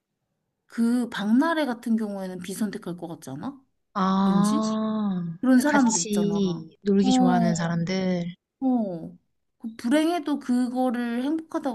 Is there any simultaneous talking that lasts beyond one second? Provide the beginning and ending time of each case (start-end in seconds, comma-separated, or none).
5.4-7.1